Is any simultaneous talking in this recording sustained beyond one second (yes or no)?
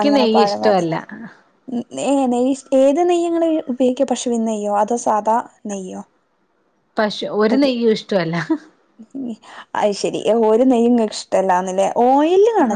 no